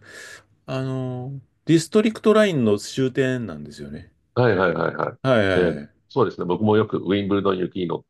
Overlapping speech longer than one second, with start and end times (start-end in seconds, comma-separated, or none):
none